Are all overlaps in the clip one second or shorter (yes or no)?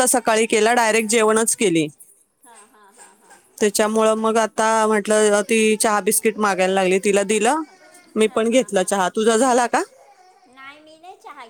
yes